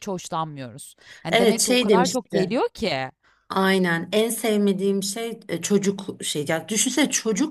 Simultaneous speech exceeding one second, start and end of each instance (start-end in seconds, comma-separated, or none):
1.3-2.5